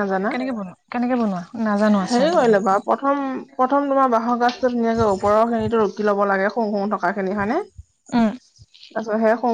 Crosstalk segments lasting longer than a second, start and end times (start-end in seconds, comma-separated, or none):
none